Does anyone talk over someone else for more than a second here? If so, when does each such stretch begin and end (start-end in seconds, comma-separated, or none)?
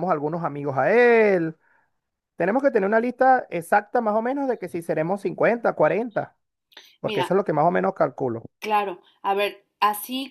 none